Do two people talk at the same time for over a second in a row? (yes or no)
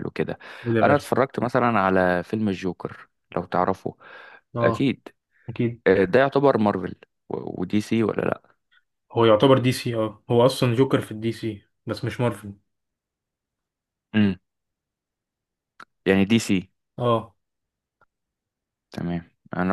no